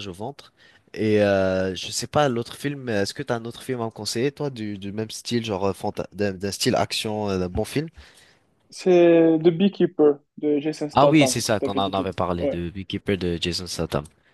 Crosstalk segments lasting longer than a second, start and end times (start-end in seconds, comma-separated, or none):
10.9-12.7